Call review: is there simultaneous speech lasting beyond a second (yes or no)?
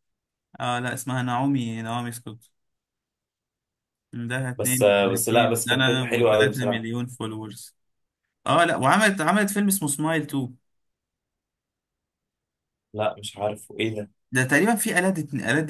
yes